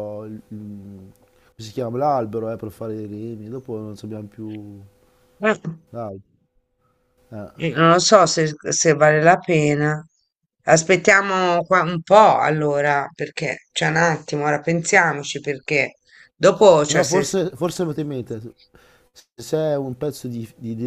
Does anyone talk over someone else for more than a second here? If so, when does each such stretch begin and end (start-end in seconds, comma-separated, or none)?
none